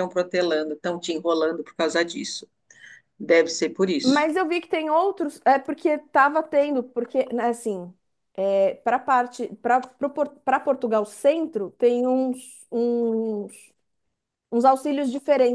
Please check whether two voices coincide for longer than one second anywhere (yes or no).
no